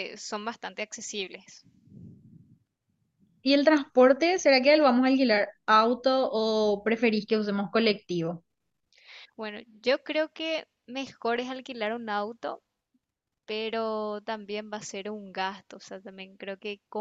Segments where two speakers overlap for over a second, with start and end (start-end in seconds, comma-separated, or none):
none